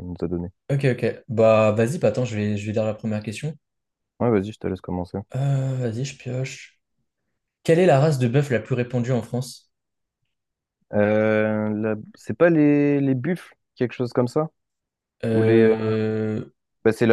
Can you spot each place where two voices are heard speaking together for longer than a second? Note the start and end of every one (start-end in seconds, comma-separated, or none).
none